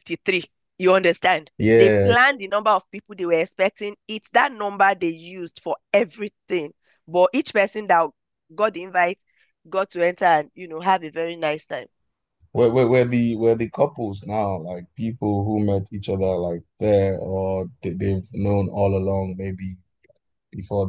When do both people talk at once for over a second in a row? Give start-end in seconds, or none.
none